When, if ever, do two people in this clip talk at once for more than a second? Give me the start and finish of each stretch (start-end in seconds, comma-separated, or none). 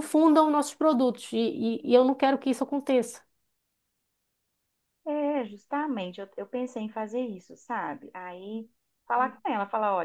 none